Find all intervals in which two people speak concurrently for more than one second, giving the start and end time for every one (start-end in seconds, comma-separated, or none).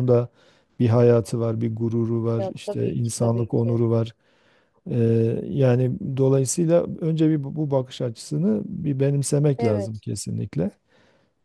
2.4-3.8